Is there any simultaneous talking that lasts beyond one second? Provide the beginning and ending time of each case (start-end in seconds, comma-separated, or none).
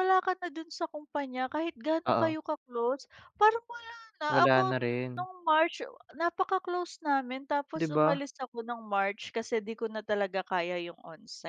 none